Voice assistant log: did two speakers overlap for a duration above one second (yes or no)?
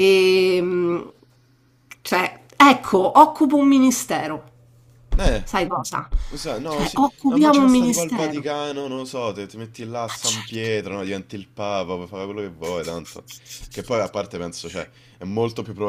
yes